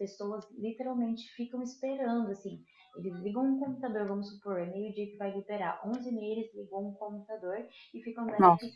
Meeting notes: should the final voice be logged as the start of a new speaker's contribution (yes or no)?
no